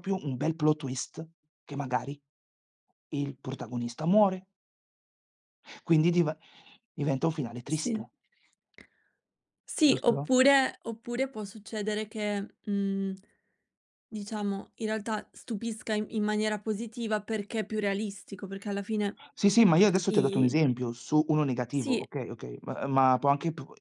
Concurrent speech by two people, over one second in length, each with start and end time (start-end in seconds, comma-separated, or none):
none